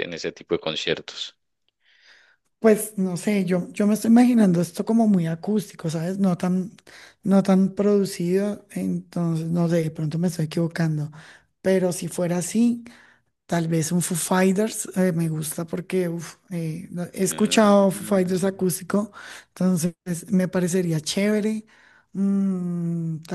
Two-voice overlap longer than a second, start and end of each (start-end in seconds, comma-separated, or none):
17.3-18.6